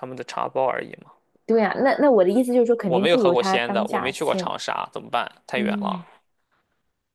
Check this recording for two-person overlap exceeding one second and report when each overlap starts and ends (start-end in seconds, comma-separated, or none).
2.9-4.5